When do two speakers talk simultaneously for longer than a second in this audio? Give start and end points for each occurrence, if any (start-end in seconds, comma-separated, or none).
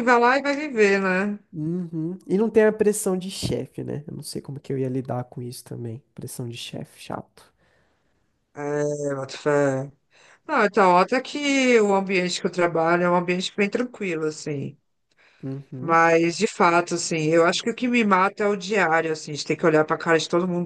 none